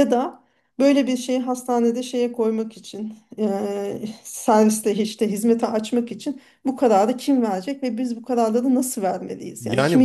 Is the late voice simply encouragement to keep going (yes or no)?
no